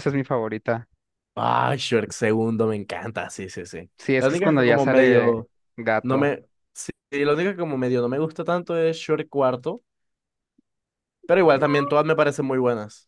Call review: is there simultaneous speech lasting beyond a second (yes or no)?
yes